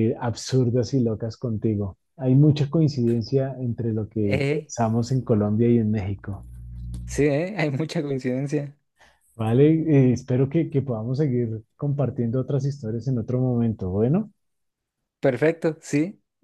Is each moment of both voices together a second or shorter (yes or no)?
yes